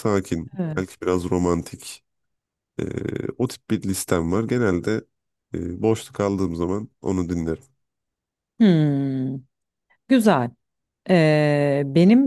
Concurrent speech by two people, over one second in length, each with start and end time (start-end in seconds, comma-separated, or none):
none